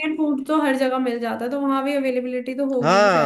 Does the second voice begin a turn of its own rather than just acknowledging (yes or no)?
yes